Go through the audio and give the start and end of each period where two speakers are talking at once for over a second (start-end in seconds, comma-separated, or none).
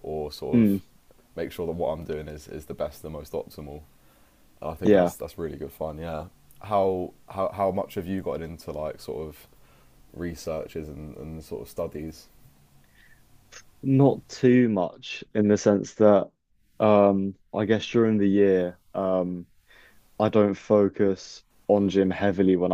none